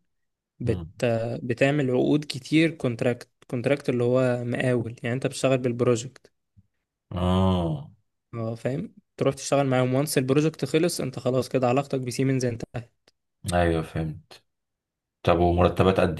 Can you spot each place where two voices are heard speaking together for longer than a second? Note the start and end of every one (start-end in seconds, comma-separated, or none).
none